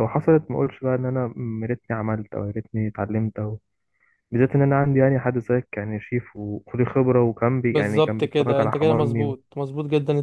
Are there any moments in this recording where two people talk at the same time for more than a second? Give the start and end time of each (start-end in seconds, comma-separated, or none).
7.7-9.3